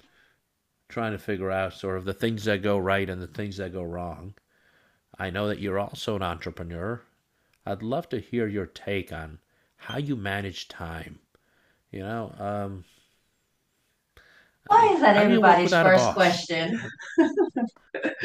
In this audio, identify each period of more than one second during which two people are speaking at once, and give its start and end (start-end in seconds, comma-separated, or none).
14.7-16.4